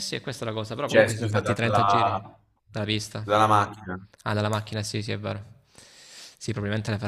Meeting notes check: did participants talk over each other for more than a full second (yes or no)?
yes